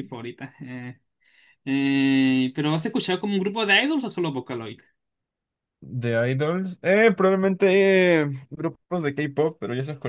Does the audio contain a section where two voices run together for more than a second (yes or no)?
no